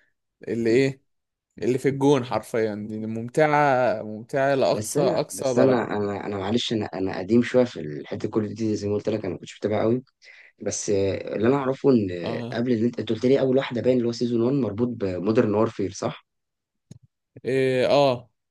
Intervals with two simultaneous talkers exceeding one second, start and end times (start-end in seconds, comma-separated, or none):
4.7-5.9